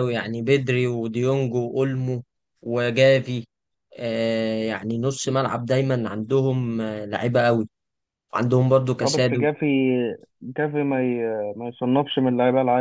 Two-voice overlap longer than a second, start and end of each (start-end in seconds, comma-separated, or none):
none